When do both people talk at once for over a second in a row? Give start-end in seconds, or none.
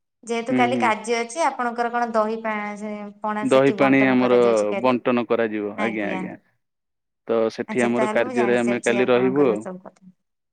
7.7-9.6